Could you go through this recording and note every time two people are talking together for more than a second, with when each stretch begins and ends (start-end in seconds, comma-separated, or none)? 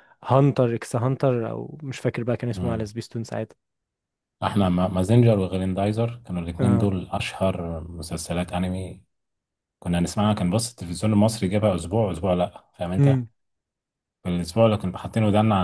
none